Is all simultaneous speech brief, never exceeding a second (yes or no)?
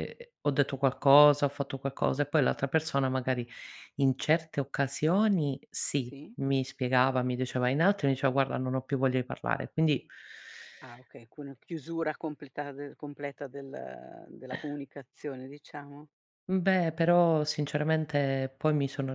yes